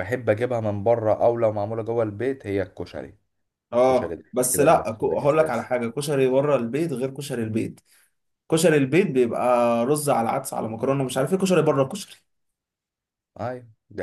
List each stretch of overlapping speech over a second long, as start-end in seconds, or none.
3.8-5.7